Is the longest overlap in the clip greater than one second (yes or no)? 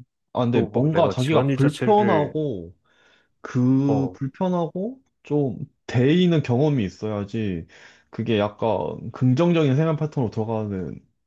yes